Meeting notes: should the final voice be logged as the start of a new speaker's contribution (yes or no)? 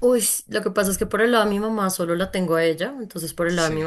no